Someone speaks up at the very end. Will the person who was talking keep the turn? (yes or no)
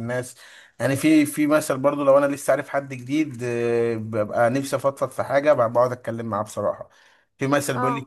yes